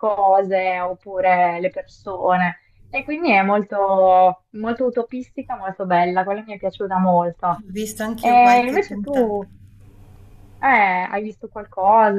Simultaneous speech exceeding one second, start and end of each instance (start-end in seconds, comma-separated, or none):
8.2-9.5